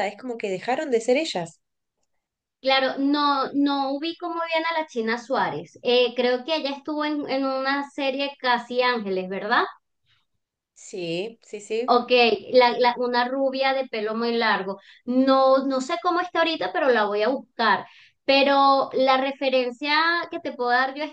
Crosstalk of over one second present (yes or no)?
no